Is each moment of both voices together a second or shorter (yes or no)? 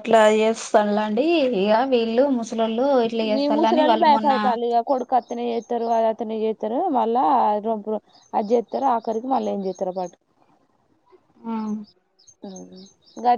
yes